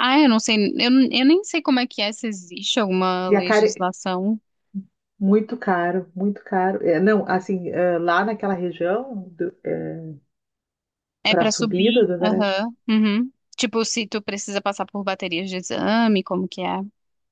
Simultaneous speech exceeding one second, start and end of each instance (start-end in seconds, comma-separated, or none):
11.3-12.6